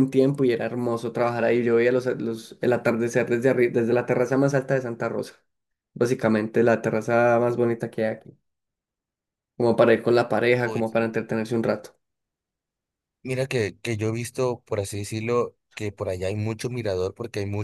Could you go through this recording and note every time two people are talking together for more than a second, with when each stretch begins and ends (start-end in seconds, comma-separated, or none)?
none